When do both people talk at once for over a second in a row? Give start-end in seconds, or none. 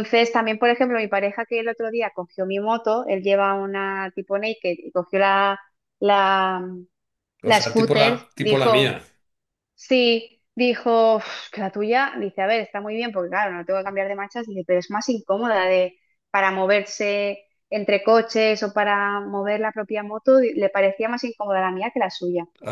7.4-9.0